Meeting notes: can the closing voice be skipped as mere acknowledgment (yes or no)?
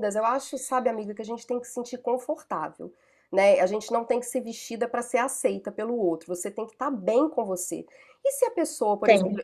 yes